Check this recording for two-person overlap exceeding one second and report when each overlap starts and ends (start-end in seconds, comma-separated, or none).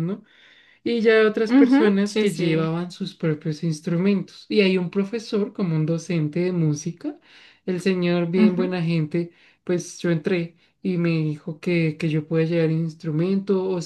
1.5-2.7